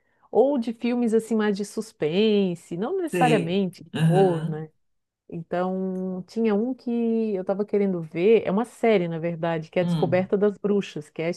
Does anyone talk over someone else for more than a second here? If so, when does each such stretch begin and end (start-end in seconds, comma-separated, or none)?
3.1-4.6